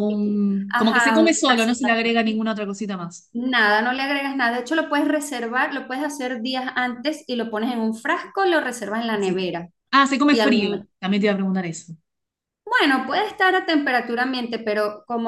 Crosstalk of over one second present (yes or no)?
yes